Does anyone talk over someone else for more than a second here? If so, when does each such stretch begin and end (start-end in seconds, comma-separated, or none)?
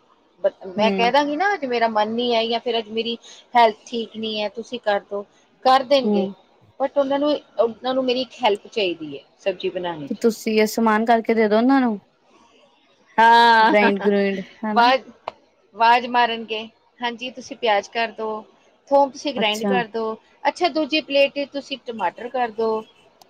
none